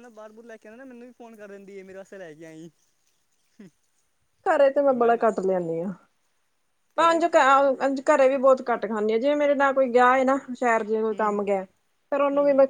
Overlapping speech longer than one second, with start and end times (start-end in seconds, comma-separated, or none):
none